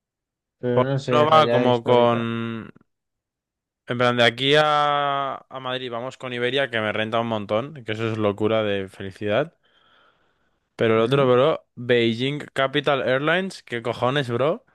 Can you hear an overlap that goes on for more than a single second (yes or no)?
yes